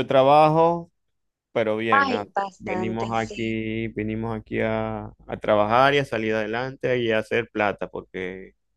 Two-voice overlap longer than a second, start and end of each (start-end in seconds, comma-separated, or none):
1.9-3.6